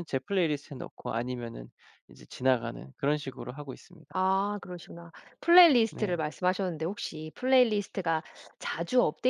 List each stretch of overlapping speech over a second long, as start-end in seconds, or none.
none